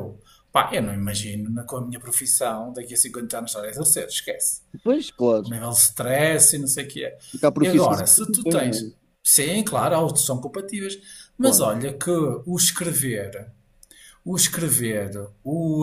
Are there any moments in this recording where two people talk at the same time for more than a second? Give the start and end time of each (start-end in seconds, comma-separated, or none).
7.6-9.1